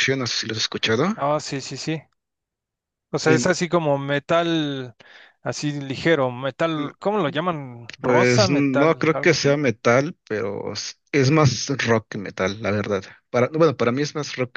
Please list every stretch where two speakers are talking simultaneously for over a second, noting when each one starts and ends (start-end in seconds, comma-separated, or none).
8.0-9.6